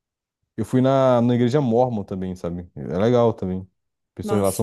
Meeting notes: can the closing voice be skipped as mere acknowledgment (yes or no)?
no